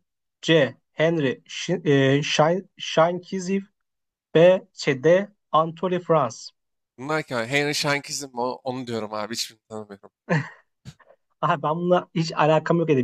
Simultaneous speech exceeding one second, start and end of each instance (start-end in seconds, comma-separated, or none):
none